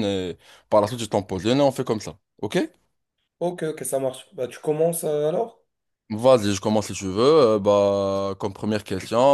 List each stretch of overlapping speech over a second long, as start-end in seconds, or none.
none